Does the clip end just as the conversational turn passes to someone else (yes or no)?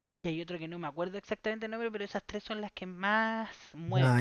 yes